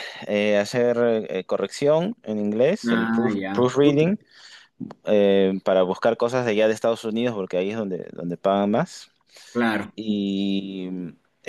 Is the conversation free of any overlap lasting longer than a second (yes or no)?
no